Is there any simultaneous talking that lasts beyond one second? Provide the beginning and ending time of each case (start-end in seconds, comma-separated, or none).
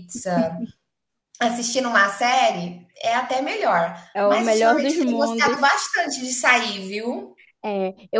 4.1-5.6